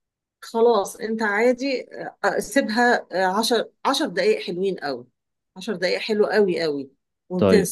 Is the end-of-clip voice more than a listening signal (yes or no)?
no